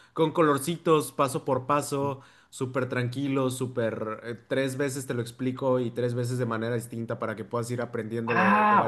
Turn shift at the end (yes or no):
yes